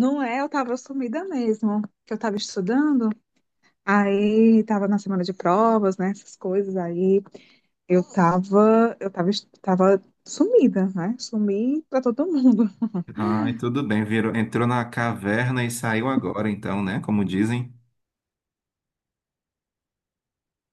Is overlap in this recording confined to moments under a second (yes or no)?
yes